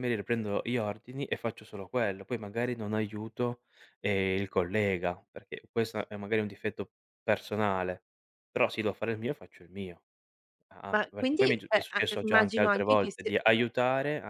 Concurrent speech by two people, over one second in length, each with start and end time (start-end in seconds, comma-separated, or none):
10.9-13.3